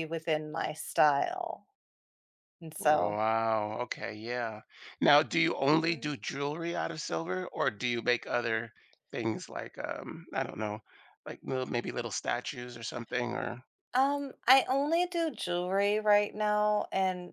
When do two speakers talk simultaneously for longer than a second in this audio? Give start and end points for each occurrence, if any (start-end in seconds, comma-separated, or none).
none